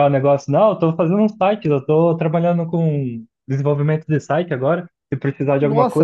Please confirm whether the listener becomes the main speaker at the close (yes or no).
yes